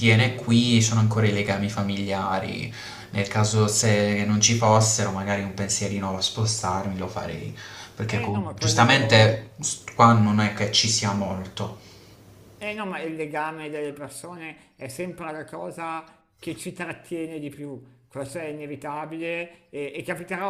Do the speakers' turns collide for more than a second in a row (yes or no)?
yes